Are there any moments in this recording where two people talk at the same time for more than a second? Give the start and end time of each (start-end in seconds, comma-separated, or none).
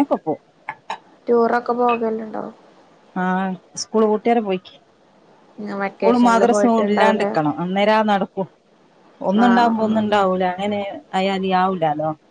5.9-7.3